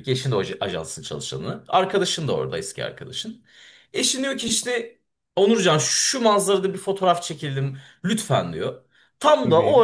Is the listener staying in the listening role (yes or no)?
yes